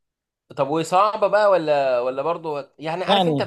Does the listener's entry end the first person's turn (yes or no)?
no